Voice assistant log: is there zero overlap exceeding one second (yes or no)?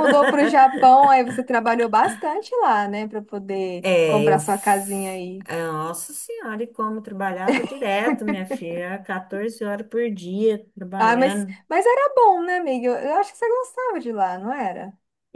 no